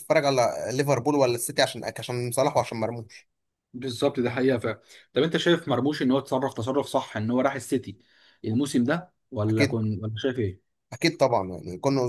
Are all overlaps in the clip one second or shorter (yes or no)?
yes